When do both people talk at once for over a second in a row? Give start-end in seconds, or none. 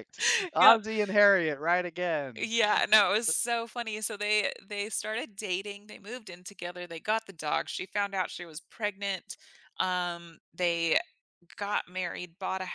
none